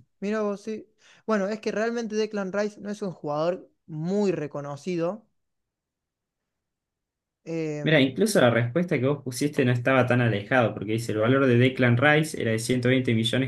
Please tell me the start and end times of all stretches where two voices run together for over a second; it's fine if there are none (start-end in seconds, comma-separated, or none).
none